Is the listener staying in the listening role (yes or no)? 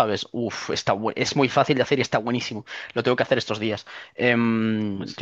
yes